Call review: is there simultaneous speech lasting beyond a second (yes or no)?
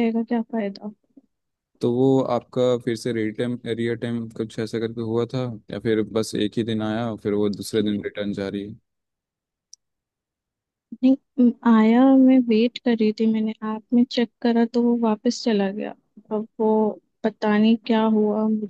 no